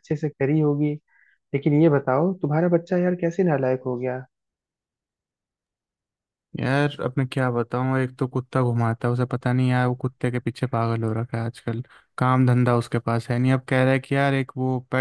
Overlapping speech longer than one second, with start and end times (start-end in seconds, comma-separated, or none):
none